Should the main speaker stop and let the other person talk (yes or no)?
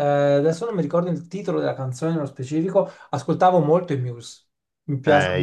yes